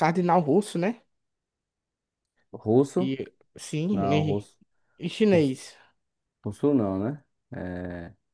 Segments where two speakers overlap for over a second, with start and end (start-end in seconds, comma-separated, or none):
none